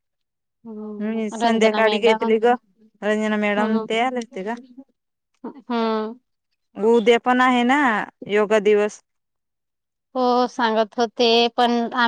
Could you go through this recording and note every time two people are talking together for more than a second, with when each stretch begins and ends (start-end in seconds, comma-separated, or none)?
1.0-2.4